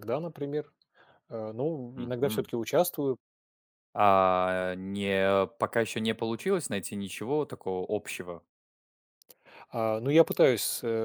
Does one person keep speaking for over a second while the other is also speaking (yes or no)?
no